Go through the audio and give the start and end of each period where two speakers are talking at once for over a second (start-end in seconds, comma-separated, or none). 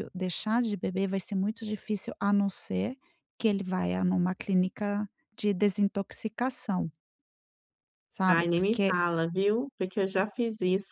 none